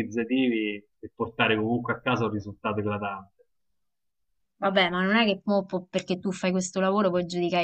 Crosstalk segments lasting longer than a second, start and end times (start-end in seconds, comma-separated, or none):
none